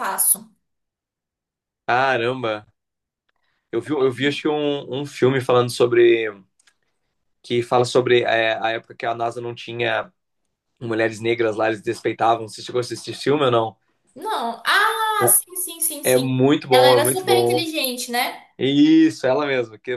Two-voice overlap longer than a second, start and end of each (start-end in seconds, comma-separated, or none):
16.0-17.6